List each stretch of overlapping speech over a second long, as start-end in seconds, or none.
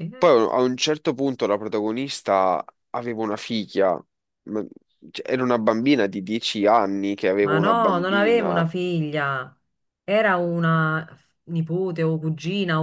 7.4-8.6